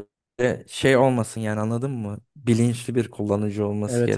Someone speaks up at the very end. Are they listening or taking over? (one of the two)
taking over